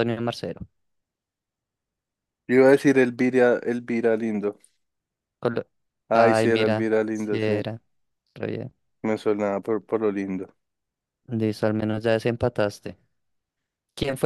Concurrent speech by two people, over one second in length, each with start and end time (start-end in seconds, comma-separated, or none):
6.1-7.7